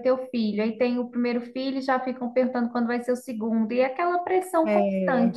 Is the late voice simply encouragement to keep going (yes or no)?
no